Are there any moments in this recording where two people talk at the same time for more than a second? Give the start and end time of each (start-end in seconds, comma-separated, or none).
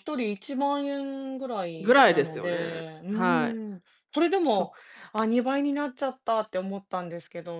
1.8-3.5